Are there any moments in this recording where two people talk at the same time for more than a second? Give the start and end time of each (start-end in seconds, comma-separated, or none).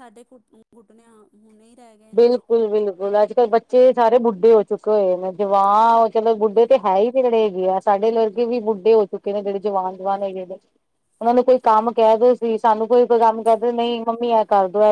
none